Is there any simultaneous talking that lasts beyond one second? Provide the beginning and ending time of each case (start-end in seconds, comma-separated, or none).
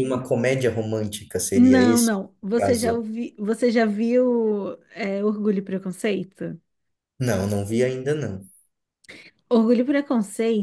1.5-3.0